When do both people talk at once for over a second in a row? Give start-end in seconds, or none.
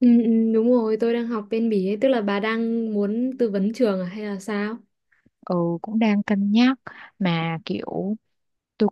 none